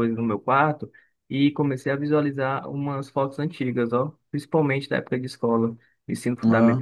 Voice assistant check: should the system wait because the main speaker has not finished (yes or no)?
yes